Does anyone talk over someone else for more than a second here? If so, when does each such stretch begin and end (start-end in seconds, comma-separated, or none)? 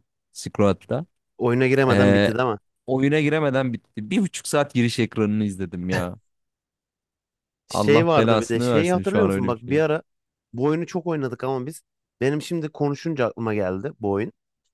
7.7-9.8